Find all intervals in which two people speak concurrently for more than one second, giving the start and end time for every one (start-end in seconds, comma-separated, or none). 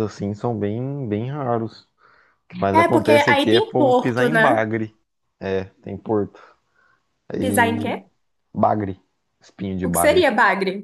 2.7-4.7